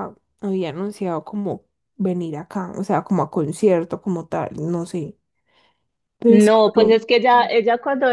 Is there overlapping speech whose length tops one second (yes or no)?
no